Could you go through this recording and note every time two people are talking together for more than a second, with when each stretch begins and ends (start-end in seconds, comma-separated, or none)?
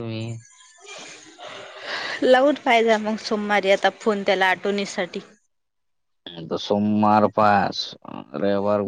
none